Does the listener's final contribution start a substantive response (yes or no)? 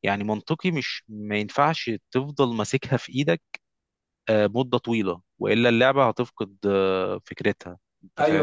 yes